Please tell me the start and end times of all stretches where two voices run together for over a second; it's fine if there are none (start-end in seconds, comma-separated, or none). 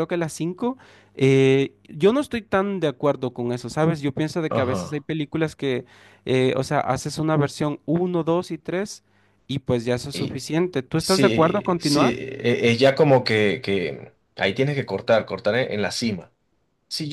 11.0-12.2